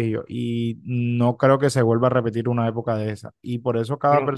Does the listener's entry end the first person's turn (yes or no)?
no